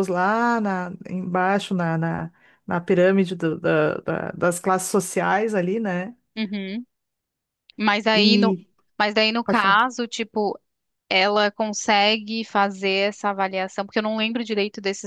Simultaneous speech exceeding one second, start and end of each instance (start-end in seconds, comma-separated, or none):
none